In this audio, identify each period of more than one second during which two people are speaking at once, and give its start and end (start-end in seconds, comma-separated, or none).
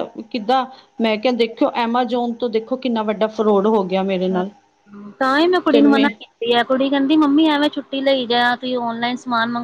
none